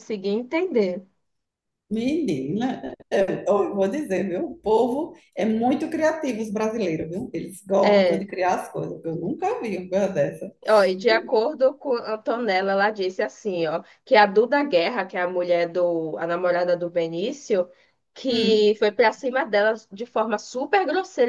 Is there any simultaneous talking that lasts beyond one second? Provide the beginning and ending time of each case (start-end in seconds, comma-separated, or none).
none